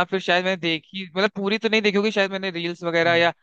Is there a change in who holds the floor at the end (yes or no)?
no